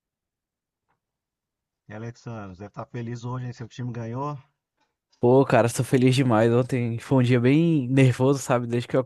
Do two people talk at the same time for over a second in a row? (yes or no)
no